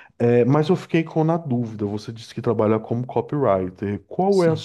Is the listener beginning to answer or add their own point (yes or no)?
no